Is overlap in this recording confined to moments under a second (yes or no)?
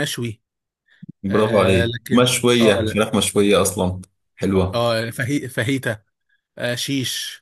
no